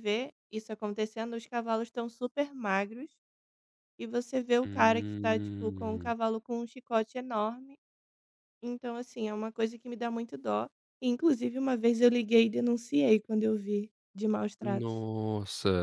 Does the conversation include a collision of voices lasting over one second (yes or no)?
yes